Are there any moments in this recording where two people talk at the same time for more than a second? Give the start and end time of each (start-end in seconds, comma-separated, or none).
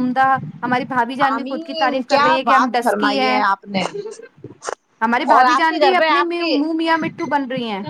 1.3-3.4, 5.3-6.6